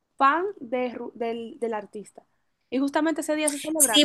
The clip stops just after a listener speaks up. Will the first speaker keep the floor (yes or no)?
no